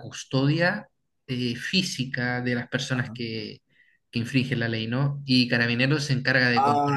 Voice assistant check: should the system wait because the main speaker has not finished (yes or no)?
no